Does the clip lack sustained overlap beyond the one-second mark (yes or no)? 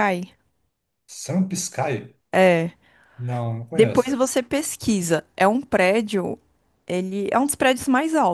yes